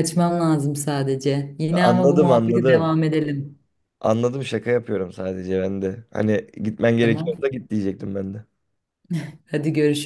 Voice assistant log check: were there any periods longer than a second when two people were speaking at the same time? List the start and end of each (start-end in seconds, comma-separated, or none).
1.7-2.9